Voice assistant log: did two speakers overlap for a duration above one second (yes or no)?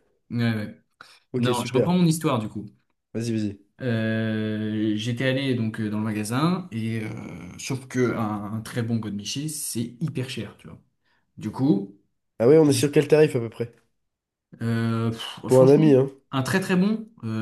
no